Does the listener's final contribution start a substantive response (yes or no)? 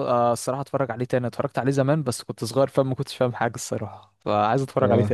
yes